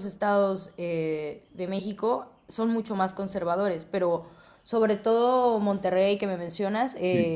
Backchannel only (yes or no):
yes